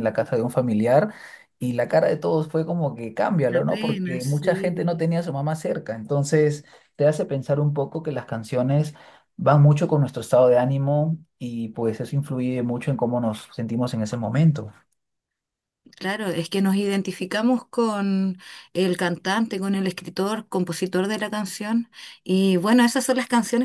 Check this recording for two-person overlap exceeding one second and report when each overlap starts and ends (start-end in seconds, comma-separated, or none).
3.5-4.9